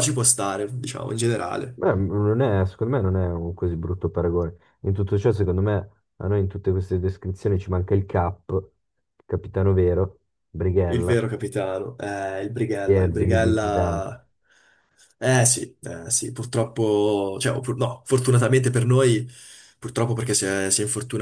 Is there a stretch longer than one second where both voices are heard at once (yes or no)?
yes